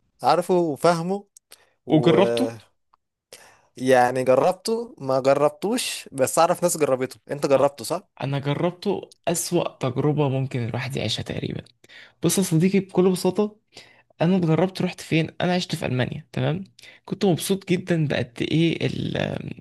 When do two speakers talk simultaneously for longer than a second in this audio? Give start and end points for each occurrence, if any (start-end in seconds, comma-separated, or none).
none